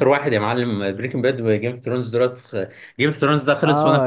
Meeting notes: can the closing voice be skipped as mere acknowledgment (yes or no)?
no